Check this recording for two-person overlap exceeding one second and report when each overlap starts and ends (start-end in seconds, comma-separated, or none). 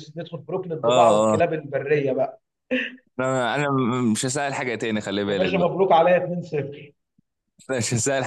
none